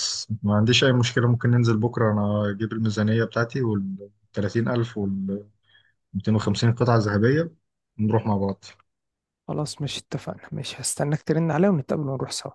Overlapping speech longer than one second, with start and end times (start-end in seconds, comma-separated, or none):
none